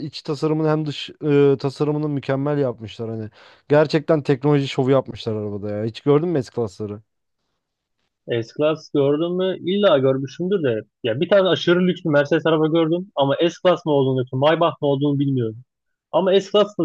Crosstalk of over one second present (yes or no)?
no